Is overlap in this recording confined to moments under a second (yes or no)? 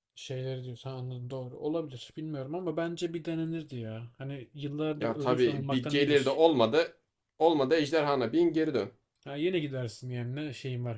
no